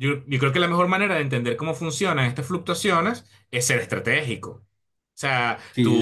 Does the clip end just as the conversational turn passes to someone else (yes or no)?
yes